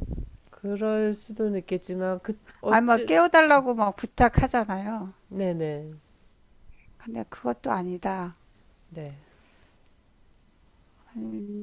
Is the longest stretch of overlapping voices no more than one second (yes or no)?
yes